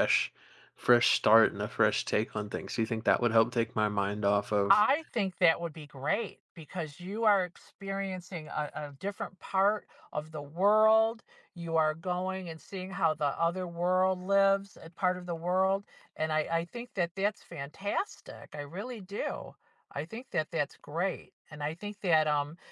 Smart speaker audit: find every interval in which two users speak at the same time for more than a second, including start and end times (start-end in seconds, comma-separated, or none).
none